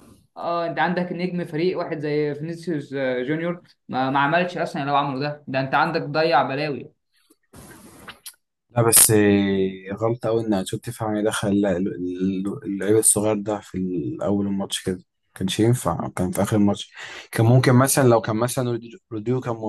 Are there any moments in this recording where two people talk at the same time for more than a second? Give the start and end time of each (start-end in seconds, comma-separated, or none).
none